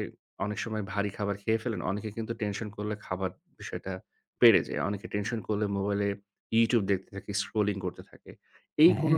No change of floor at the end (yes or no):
yes